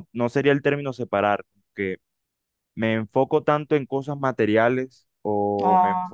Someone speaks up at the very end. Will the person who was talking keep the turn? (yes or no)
yes